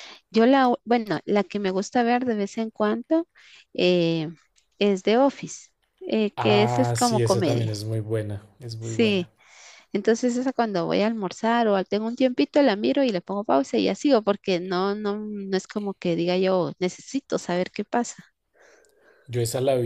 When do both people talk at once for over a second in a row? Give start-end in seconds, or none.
6.4-7.7